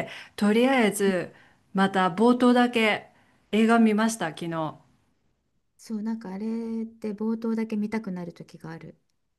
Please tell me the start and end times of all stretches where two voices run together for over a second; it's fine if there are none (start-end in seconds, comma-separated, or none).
none